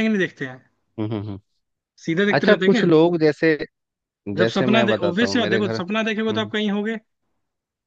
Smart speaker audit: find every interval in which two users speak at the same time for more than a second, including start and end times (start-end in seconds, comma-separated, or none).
4.4-6.5